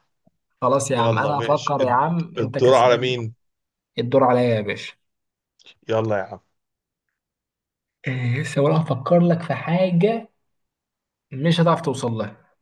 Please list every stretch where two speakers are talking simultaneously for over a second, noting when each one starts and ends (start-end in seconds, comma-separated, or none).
0.9-3.1